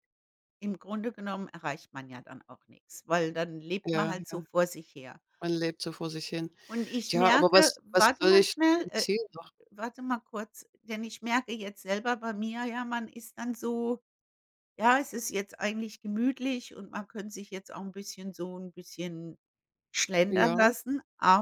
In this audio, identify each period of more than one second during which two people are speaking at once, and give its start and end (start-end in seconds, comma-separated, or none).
7.1-9.1